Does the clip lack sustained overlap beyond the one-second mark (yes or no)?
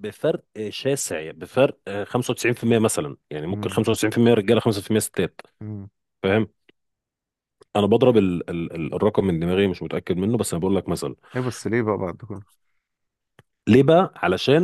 yes